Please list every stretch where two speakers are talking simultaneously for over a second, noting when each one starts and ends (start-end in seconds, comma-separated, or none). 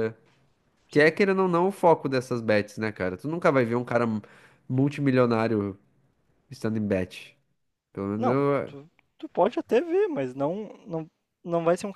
none